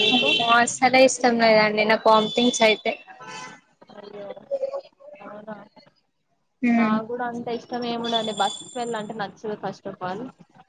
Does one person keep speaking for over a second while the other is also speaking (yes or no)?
no